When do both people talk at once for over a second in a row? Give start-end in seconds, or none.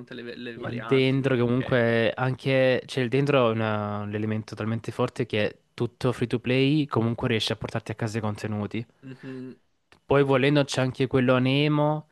0.5-1.9